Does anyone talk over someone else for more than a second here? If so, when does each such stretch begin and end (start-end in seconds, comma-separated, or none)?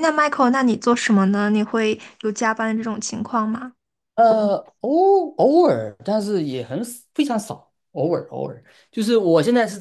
none